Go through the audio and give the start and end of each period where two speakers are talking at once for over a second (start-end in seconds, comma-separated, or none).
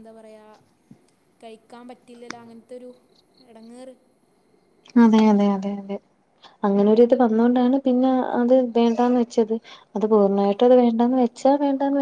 none